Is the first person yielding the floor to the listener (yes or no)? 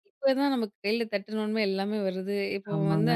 no